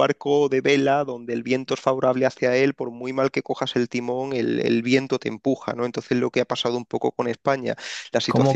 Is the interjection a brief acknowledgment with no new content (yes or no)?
no